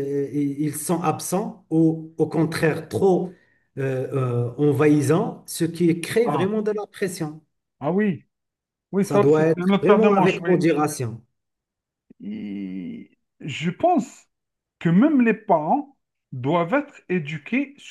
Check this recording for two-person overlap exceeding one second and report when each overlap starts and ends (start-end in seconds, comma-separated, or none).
9.0-10.6